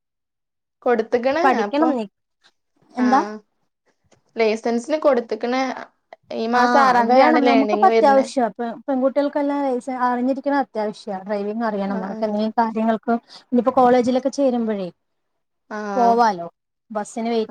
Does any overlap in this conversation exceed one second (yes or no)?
yes